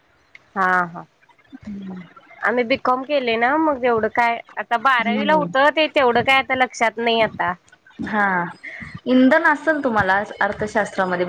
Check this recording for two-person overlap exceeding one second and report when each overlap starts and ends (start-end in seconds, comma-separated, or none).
none